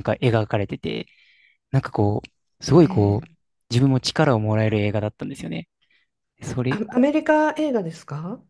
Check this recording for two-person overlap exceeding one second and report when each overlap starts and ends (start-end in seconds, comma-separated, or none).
none